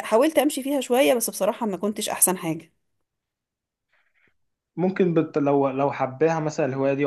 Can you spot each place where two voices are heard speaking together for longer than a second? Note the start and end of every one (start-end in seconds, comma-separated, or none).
none